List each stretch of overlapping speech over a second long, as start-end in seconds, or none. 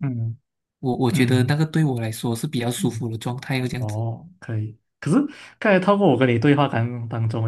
none